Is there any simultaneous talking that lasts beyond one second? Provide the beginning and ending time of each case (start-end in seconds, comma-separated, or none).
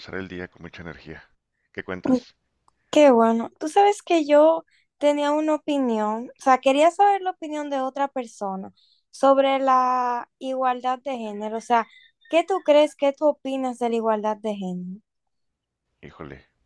none